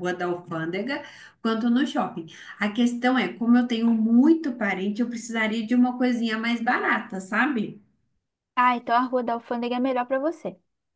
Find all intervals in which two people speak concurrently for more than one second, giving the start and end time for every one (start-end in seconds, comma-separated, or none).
none